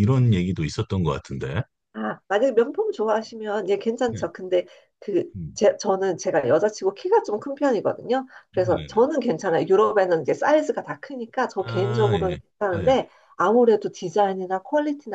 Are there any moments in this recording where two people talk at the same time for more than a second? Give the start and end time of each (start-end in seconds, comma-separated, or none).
11.6-13.0